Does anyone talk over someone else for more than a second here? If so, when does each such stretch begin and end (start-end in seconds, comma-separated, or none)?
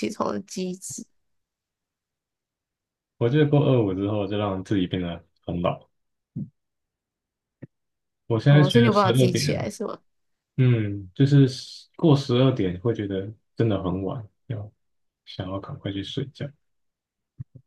8.5-9.7